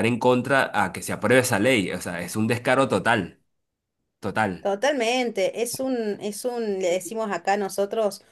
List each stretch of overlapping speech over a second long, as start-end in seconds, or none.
none